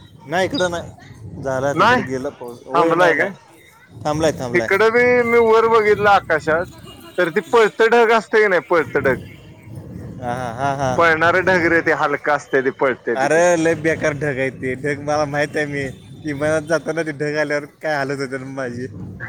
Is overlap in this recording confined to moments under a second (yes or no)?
yes